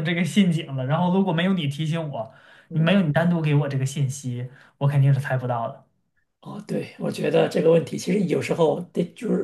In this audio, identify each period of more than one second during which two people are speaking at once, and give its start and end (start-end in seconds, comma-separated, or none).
none